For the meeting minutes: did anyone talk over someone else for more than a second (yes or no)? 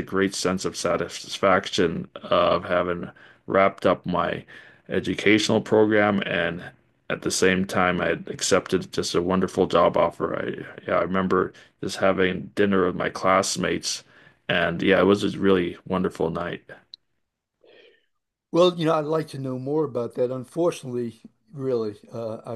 no